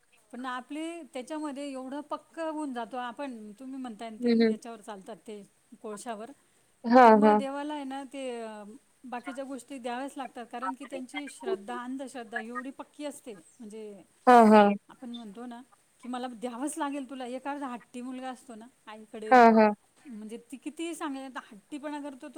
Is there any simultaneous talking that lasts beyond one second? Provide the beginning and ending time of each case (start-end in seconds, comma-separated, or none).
none